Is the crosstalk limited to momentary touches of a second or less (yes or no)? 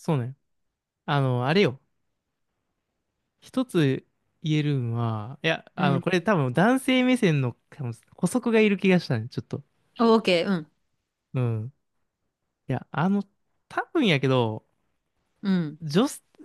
yes